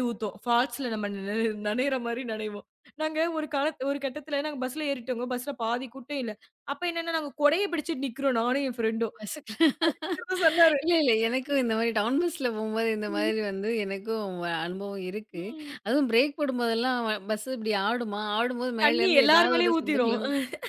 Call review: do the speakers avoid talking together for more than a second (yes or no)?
no